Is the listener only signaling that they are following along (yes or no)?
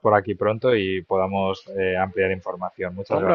no